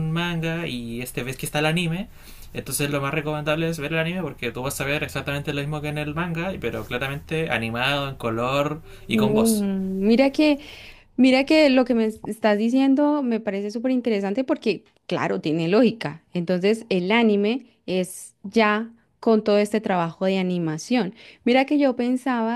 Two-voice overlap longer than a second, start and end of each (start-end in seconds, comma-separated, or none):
none